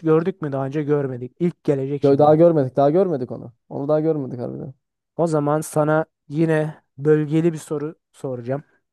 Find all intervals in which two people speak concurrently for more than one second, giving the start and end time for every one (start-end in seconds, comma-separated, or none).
none